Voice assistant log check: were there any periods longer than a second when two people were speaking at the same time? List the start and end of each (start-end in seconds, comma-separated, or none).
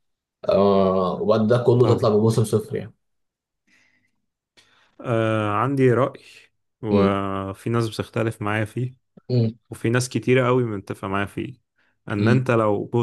none